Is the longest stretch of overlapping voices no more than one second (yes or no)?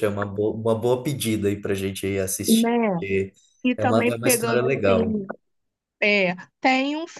no